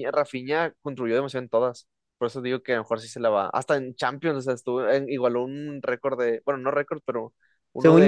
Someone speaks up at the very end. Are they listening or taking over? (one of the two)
listening